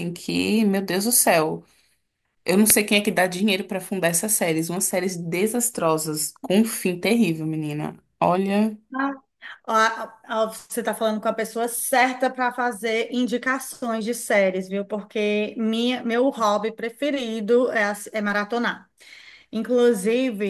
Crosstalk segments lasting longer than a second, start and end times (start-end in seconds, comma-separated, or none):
none